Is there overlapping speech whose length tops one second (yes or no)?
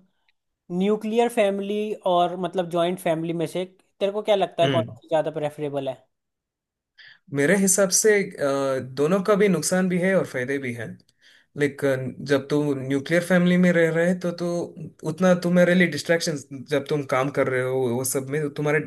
no